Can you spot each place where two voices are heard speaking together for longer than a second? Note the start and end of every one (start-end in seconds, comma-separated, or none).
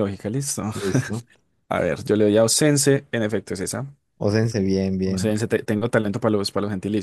none